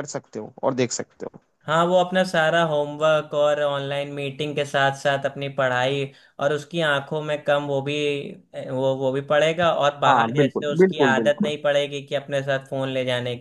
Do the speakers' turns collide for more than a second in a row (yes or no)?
yes